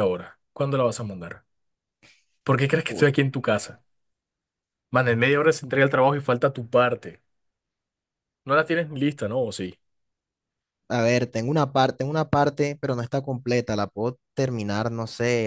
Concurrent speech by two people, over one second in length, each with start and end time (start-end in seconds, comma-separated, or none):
none